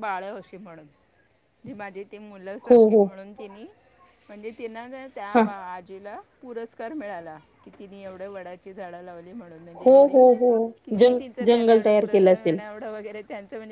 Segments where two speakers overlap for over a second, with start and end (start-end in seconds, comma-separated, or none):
11.0-12.6